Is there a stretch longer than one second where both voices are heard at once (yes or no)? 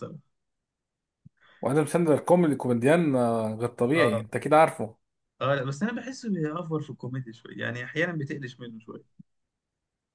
no